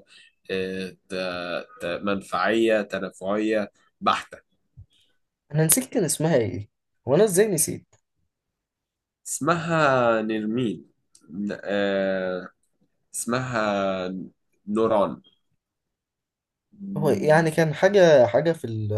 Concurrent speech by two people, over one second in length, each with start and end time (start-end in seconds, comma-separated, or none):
none